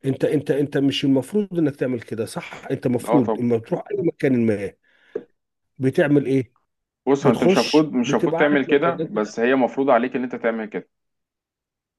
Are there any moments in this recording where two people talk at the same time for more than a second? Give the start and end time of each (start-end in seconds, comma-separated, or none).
7.2-9.3